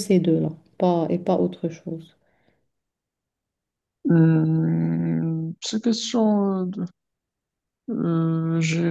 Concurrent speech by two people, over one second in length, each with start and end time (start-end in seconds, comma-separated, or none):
none